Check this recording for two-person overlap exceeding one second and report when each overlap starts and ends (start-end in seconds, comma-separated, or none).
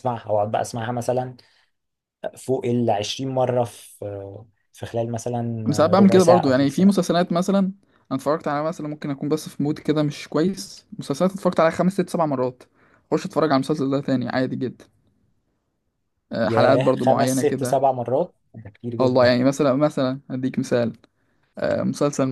5.7-7.1, 16.4-17.8